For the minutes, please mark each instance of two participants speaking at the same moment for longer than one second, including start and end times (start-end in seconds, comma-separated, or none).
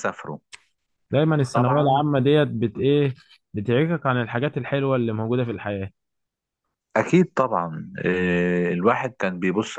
none